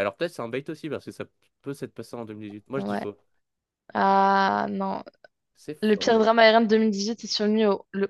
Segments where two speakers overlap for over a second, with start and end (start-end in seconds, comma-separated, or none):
none